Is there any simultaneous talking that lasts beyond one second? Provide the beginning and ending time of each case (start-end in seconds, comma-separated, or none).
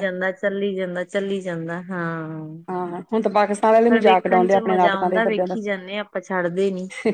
3.9-5.6